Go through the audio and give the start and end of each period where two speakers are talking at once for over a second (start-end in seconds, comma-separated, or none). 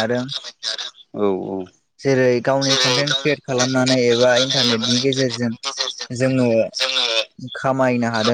2.6-5.5